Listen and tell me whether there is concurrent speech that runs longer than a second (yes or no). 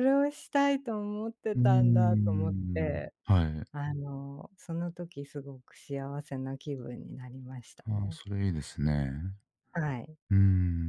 yes